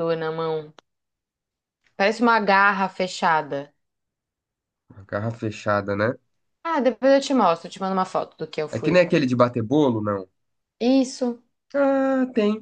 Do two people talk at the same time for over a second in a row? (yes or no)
no